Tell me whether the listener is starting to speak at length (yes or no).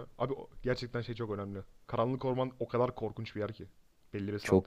yes